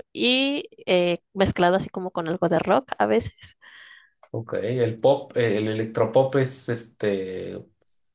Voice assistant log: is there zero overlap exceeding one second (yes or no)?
yes